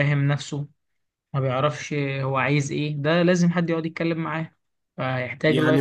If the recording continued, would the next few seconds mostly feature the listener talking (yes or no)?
yes